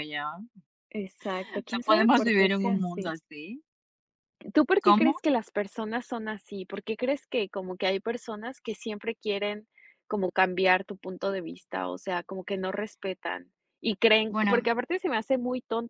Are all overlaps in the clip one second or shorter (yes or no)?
no